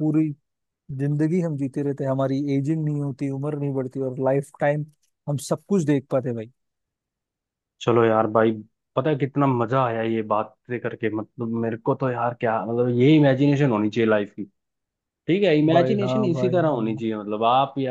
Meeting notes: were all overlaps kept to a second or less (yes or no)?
no